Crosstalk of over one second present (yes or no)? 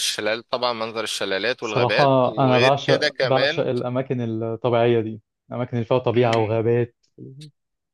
yes